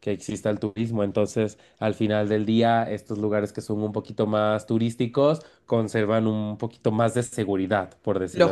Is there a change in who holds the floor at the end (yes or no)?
yes